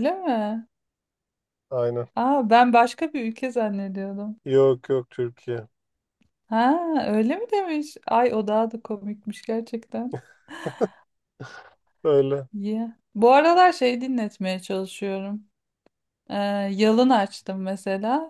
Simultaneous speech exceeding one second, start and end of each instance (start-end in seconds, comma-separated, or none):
none